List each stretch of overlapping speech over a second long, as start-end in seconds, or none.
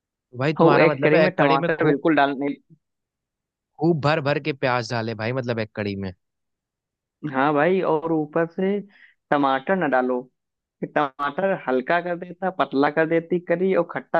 0.6-2.0